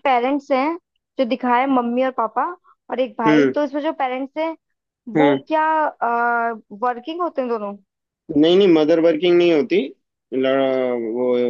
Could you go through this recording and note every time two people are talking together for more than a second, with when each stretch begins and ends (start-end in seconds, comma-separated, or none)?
none